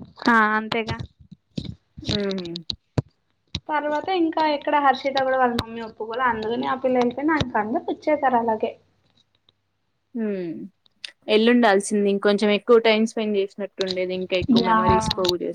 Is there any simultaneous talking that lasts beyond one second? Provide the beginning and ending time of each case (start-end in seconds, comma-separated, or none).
none